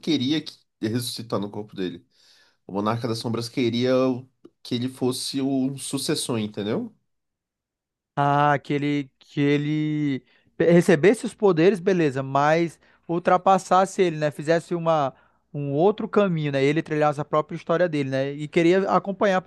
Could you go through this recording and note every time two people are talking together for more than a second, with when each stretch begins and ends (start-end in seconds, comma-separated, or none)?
none